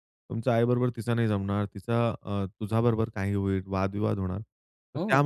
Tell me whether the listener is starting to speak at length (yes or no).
no